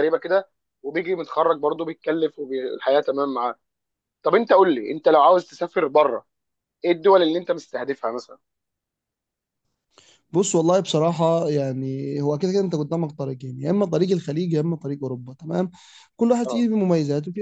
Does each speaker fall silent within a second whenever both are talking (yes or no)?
yes